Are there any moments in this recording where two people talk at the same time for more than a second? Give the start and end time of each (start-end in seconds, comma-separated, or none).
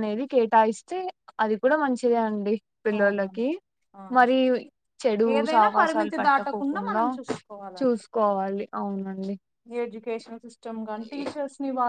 5.4-7.0